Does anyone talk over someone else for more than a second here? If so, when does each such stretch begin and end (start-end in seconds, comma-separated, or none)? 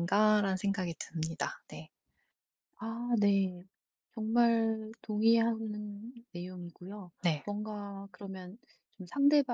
none